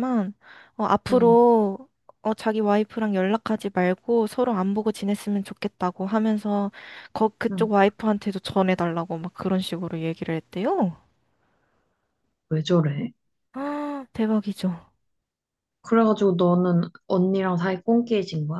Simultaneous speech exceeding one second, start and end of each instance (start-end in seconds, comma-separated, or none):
none